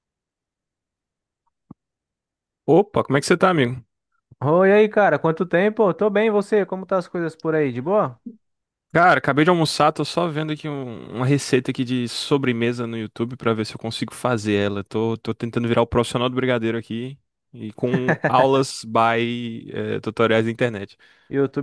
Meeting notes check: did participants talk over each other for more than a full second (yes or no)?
no